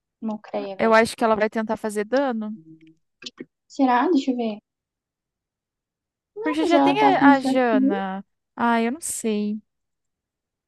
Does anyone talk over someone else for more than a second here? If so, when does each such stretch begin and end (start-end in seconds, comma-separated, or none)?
6.4-7.9